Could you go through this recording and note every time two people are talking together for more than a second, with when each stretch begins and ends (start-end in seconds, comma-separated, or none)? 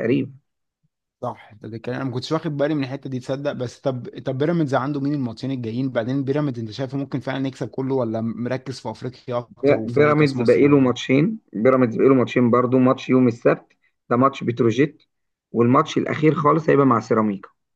9.6-10.9